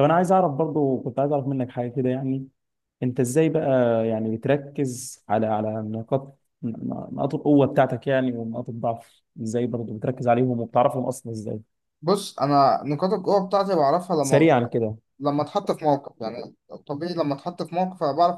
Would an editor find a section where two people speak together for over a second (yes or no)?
no